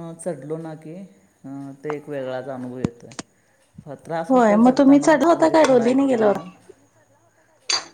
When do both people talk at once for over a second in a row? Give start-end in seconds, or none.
4.3-6.4